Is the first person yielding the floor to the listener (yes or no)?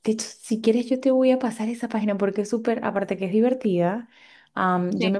no